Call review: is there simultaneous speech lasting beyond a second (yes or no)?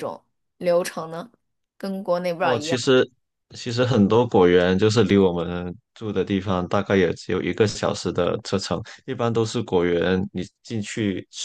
no